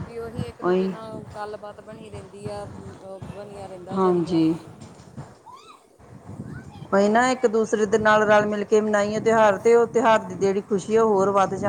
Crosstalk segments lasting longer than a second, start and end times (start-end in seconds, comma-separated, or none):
none